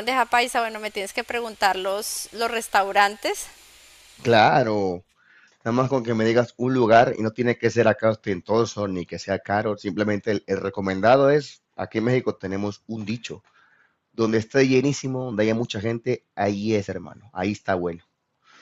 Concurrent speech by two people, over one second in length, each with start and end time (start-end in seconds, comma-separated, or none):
none